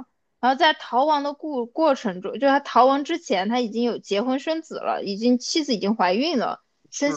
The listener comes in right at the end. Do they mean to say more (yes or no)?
no